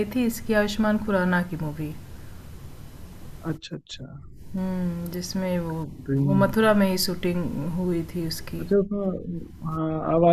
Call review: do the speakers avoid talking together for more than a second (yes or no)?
yes